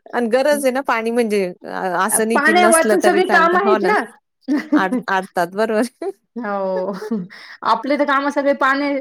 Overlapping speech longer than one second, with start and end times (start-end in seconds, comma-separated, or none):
2.3-3.8